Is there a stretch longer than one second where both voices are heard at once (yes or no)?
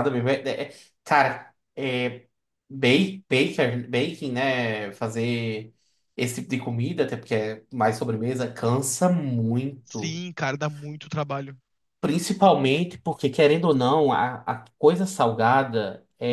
no